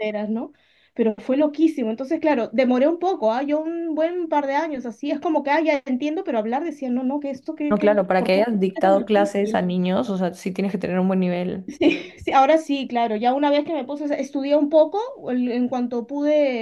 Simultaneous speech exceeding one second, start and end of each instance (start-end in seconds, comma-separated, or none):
7.7-9.6